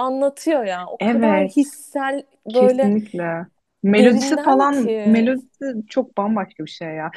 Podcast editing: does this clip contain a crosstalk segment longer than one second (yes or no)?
yes